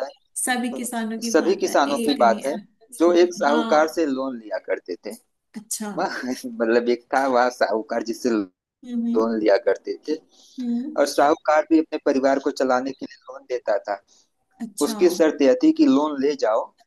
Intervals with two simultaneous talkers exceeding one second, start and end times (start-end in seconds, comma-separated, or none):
0.5-2.5